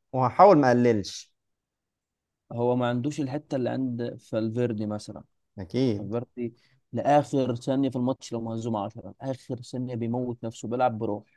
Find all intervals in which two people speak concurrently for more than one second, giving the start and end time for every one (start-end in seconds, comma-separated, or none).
none